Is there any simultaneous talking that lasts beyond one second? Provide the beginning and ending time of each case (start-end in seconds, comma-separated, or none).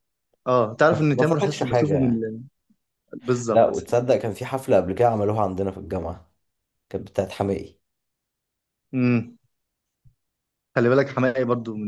0.9-2.2